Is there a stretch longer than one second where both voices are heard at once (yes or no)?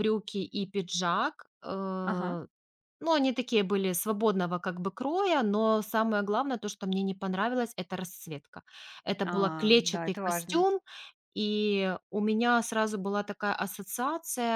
yes